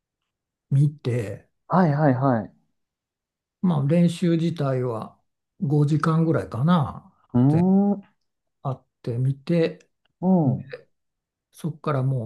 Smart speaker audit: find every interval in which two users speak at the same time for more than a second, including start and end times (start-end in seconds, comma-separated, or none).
none